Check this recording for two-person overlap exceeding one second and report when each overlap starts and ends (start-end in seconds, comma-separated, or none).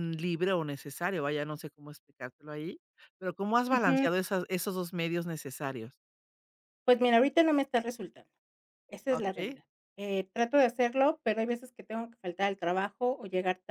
none